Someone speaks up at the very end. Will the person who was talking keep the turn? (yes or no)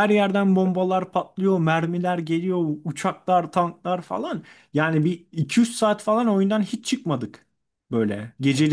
yes